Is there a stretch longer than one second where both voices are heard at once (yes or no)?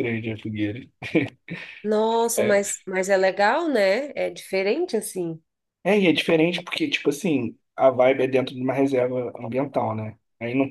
no